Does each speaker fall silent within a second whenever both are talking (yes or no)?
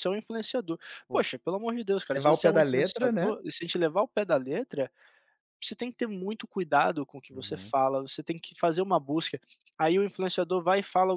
no